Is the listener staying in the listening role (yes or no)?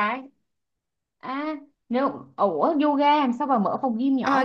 no